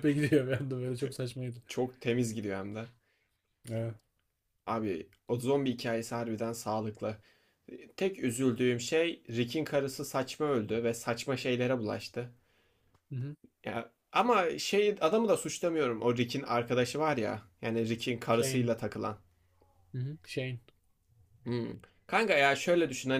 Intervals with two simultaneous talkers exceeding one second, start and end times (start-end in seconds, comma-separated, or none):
none